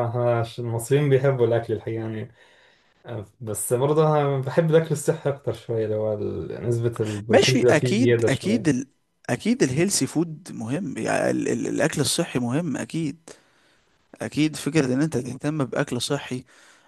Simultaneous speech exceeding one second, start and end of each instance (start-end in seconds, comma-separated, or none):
7.3-8.8